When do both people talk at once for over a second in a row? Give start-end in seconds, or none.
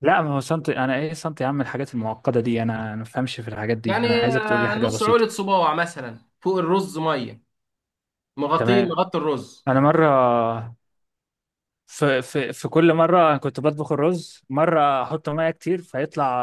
3.8-5.2